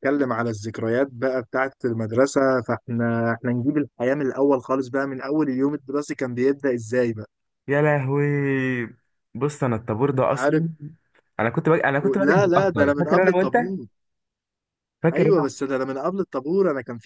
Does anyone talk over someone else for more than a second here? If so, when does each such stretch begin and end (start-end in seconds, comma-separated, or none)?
12.2-13.6